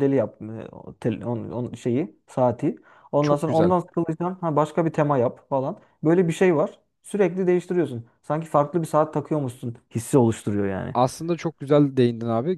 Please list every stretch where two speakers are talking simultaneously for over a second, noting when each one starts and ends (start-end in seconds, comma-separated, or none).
none